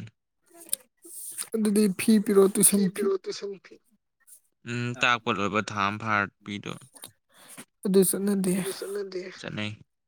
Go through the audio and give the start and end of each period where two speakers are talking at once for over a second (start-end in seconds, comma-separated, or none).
none